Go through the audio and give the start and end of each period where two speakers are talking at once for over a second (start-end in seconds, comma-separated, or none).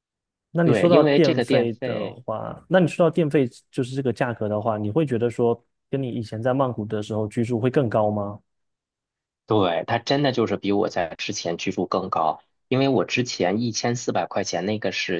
0.6-2.2